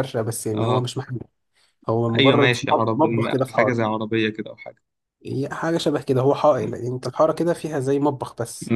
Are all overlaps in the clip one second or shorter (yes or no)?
no